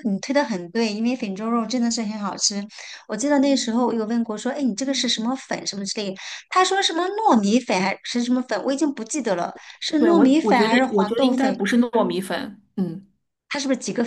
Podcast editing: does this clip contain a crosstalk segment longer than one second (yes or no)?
yes